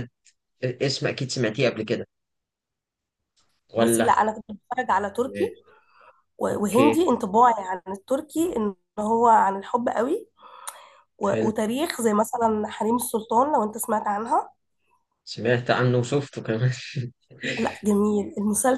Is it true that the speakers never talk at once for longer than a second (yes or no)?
yes